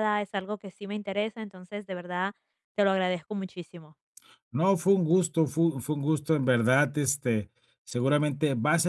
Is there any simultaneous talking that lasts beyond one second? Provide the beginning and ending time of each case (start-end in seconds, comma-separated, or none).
none